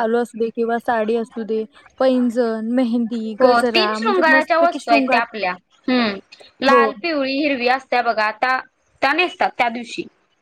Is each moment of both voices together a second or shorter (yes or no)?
no